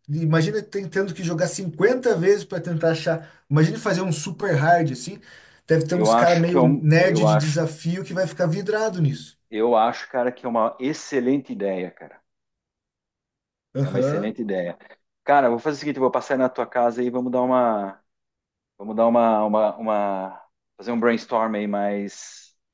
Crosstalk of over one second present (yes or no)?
yes